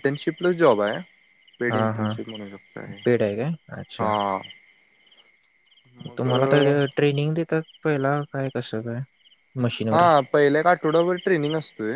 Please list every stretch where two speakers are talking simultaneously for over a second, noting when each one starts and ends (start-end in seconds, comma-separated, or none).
none